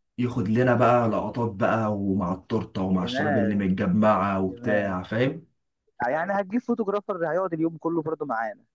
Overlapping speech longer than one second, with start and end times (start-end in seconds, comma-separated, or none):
none